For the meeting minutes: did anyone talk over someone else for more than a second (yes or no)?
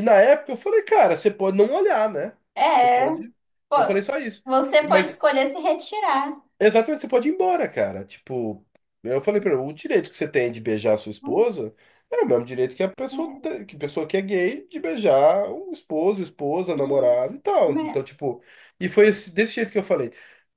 no